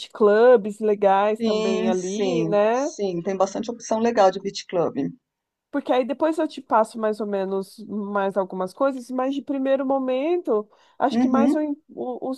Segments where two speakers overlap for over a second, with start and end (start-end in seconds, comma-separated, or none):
1.4-2.9